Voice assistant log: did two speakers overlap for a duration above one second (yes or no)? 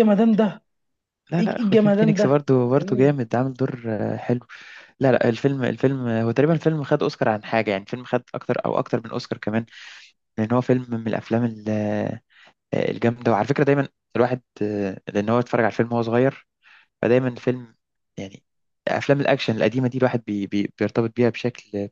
yes